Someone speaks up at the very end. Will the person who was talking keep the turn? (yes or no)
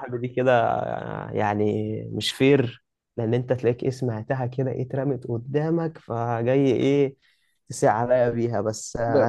no